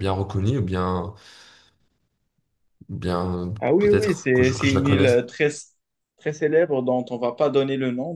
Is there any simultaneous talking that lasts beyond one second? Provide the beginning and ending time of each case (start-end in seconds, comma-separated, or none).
3.6-5.1